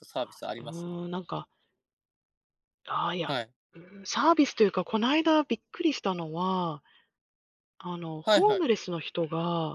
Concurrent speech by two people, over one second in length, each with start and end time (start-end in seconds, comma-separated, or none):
none